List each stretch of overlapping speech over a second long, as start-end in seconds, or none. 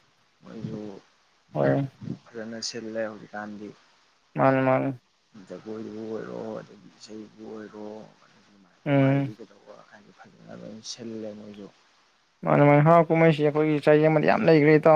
none